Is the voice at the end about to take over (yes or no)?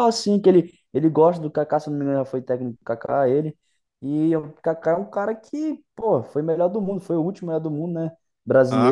yes